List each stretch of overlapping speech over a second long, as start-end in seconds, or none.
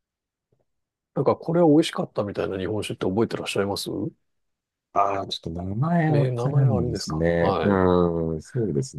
6.1-7.8